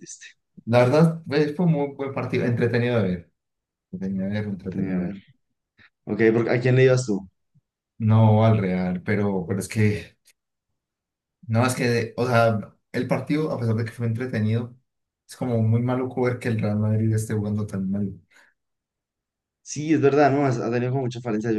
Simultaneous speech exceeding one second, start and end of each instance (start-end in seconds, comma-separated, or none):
none